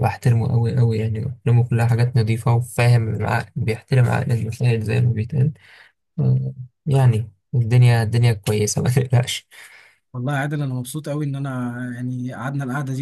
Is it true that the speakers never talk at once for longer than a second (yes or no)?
yes